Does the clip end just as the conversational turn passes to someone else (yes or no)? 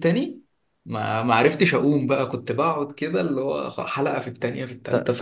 yes